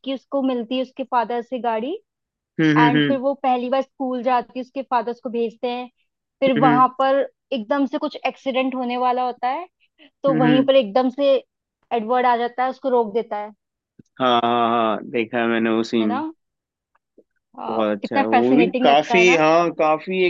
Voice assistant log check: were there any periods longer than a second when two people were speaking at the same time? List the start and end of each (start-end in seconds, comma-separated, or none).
17.7-19.4